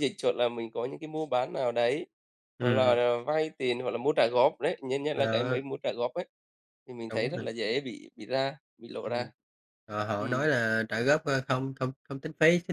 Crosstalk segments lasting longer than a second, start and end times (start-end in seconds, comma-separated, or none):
none